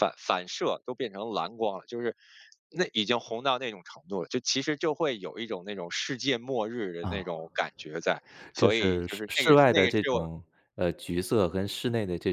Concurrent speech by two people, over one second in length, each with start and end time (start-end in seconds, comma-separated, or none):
8.6-10.2